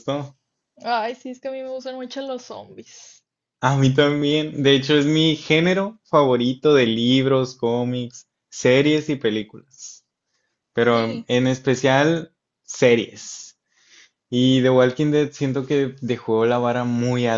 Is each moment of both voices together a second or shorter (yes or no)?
yes